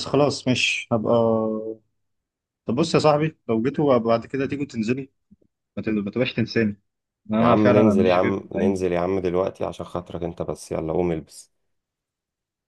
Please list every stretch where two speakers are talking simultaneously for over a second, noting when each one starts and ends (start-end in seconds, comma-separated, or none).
7.4-8.9